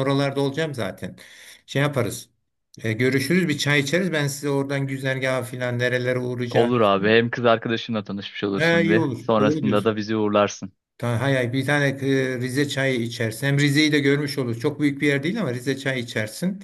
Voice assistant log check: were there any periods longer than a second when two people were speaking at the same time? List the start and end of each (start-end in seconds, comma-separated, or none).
8.6-10.0